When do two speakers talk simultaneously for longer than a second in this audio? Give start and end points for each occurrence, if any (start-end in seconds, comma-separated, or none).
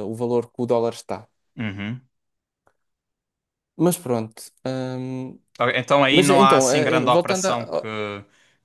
6.1-7.9